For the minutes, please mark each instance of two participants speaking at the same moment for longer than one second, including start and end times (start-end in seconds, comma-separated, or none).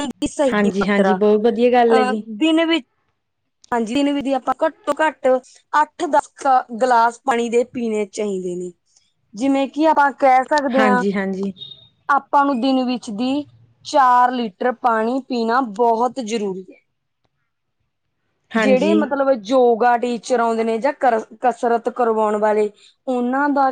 0.5-2.2